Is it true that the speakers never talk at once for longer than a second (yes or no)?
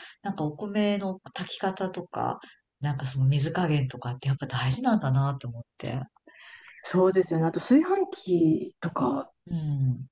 yes